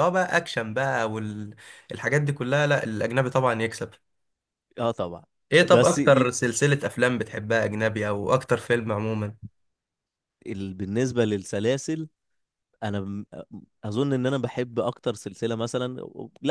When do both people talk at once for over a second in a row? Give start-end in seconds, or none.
none